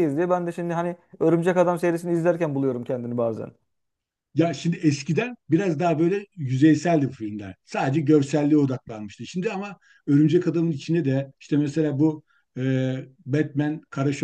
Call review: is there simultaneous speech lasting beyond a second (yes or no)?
no